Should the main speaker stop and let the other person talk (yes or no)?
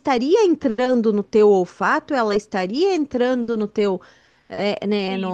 yes